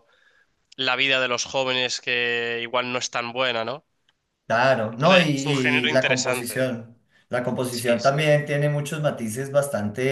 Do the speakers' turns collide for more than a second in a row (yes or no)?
yes